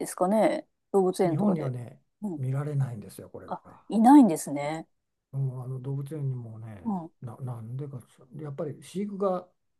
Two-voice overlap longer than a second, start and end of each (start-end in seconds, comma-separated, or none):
none